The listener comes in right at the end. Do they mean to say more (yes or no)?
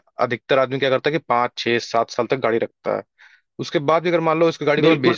yes